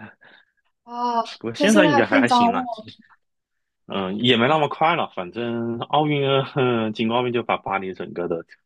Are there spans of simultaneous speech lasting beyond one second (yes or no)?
yes